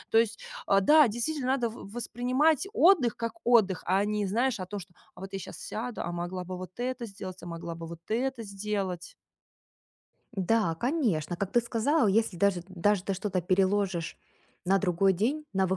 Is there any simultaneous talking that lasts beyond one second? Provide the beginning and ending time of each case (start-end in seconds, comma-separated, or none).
none